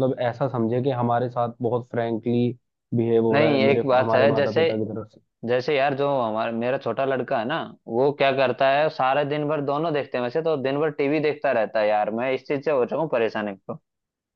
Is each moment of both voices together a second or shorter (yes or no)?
no